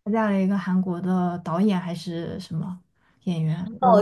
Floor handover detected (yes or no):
yes